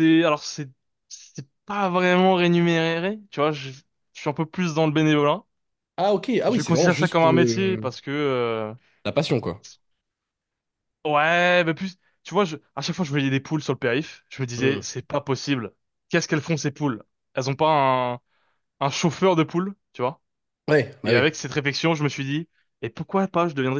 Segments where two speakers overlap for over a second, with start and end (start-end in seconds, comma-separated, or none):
6.5-7.9